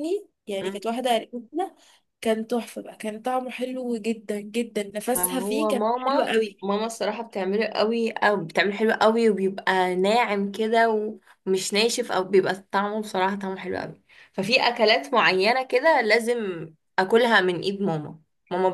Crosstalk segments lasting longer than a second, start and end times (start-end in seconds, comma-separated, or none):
5.2-6.7